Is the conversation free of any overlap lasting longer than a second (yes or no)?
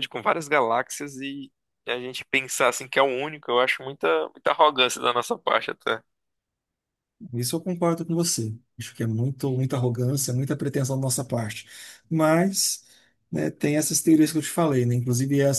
yes